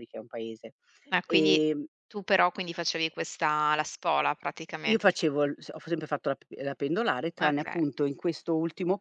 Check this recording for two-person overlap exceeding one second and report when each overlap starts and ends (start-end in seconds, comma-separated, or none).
none